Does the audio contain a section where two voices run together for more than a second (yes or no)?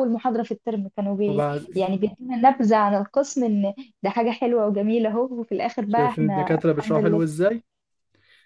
yes